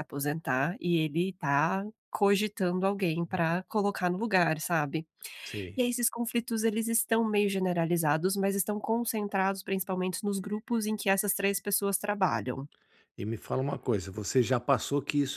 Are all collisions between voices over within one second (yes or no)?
yes